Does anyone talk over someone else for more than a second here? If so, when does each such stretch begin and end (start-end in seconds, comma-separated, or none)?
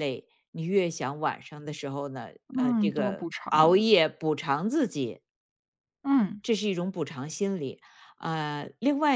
2.5-3.9